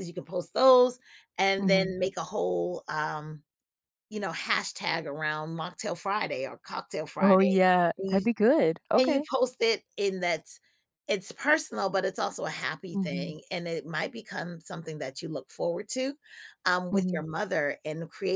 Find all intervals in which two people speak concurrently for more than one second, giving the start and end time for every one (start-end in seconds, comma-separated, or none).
none